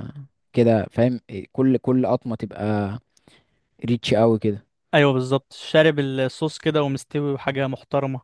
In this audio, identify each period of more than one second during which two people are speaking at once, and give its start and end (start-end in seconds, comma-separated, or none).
none